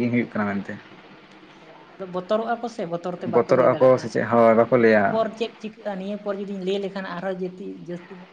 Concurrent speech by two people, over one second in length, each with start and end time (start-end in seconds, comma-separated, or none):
3.4-5.0